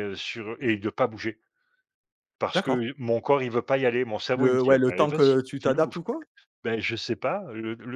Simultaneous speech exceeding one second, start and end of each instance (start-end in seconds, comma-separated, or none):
4.3-5.9